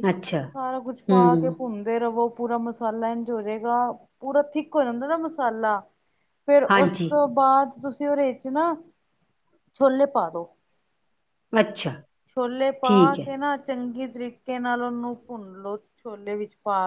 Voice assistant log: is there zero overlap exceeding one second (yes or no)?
yes